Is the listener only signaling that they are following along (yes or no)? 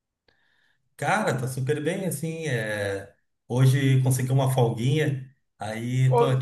yes